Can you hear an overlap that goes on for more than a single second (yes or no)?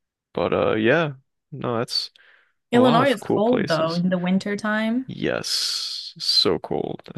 yes